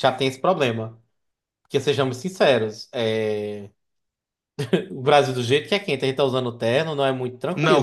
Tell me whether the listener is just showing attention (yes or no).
no